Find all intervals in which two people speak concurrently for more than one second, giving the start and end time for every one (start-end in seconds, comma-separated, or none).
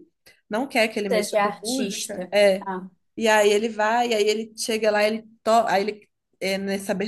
1.1-2.7